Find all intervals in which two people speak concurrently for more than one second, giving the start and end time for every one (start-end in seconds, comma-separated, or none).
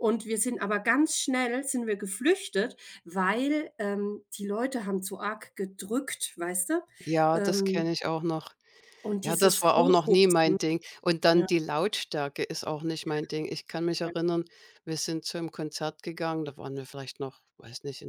9.2-10.6